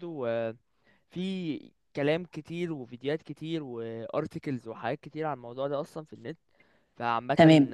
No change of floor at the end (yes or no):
yes